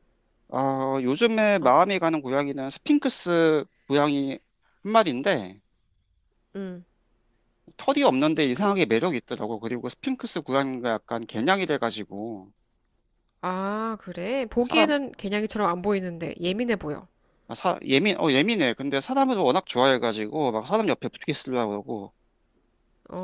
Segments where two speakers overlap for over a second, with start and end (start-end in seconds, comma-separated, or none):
none